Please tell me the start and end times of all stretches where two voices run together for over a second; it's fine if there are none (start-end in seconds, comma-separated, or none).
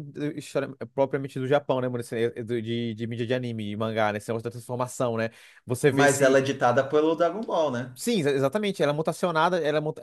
none